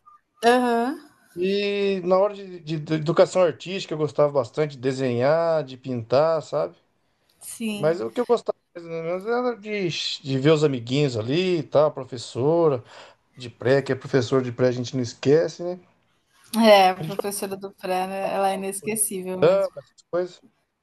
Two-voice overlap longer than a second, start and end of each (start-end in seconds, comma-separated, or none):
none